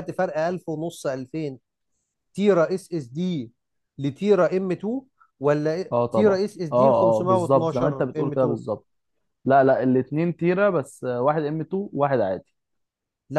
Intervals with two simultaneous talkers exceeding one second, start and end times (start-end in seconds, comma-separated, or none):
5.9-8.6